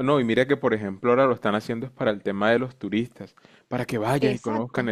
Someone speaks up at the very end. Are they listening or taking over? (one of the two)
listening